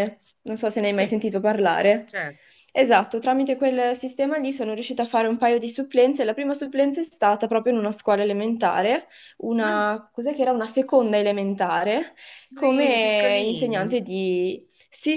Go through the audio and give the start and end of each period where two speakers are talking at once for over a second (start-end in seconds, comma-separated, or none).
12.6-14.0